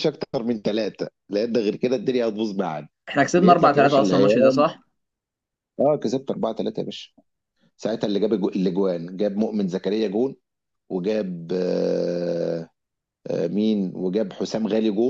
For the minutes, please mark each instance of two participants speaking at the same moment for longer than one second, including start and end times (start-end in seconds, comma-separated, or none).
3.4-4.6